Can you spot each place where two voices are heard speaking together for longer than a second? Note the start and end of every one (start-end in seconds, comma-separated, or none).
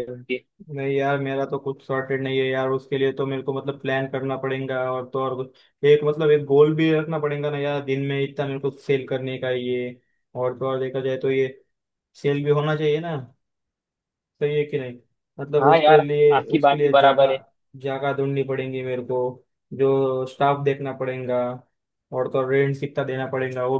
15.6-17.4